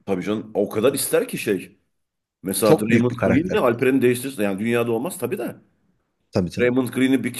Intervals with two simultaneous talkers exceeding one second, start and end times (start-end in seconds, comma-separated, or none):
2.6-3.8